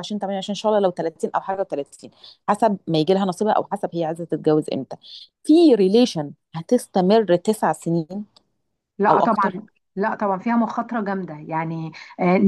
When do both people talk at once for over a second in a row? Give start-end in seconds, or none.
none